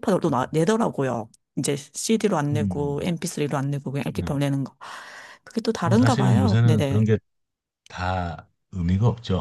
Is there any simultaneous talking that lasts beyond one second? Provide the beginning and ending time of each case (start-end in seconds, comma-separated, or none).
5.8-7.0